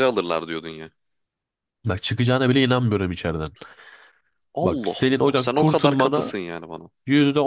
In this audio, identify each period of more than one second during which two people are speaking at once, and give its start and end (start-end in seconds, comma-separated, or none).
4.6-6.3